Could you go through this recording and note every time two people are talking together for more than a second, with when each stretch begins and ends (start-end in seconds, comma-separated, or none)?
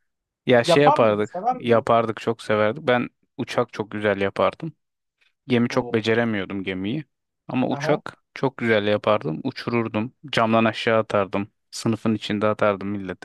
0.6-1.9